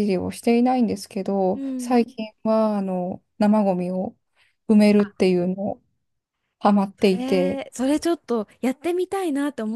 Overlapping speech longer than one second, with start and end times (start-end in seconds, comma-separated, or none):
none